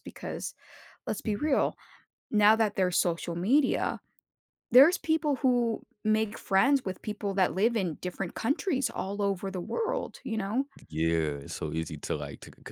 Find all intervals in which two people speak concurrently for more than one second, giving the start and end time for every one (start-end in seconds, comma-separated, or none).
none